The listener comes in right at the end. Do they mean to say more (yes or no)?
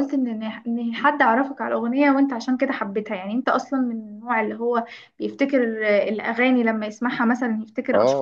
yes